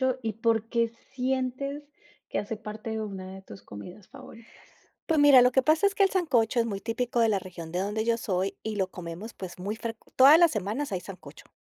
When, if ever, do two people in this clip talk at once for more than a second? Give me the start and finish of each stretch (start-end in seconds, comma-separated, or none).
none